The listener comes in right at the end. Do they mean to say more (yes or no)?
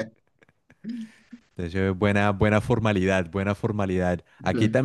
no